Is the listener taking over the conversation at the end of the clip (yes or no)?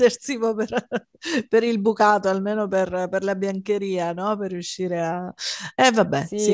yes